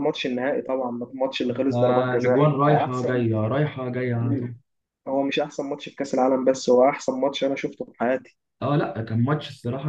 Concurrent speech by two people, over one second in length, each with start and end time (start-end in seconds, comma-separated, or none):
1.7-3.3